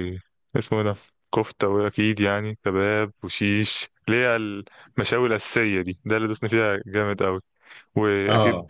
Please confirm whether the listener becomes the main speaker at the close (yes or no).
no